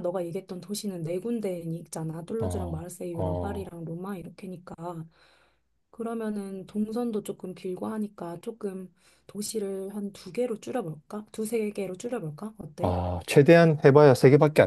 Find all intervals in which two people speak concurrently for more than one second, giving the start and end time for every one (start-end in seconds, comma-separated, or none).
2.4-3.7